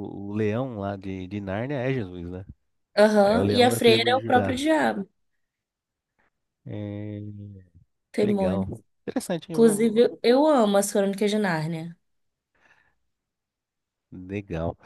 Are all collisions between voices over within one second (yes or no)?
no